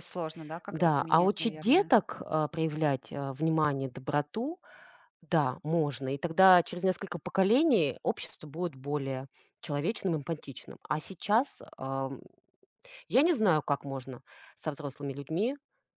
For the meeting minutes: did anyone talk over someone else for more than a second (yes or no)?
yes